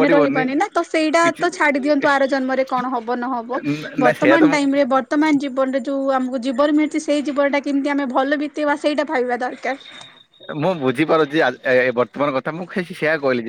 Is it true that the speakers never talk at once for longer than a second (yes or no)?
yes